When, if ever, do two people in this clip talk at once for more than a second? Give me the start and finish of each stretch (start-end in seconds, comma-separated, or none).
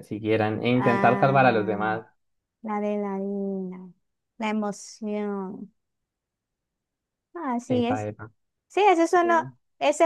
0.7-2.0